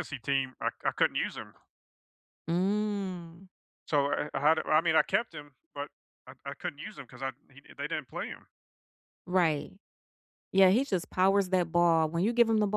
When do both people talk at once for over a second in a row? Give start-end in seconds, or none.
none